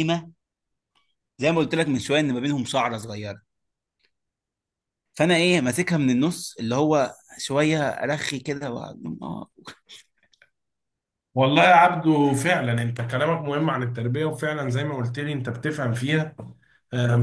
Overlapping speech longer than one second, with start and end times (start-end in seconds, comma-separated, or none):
none